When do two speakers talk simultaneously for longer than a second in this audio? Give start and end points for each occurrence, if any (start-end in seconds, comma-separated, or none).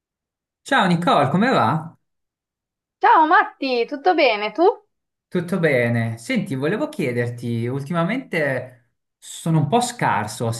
none